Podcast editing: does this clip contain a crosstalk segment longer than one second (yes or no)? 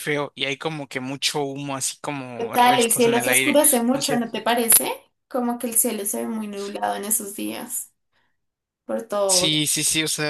yes